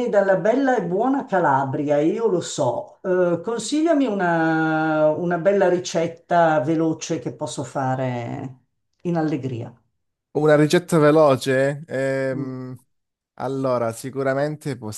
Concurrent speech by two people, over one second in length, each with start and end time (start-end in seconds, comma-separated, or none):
none